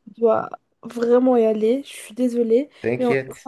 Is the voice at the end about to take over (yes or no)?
no